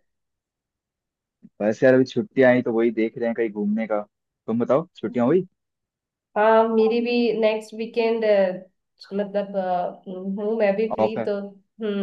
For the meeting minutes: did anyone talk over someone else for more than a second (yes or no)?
no